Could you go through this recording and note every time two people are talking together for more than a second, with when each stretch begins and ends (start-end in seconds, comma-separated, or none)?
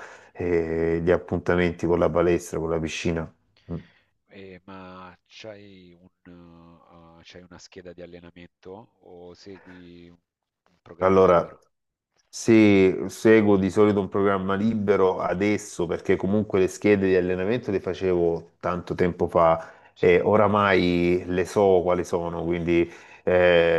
none